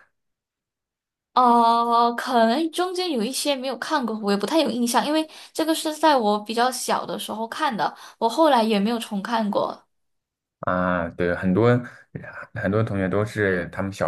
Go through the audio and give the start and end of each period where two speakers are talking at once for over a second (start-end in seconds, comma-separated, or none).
none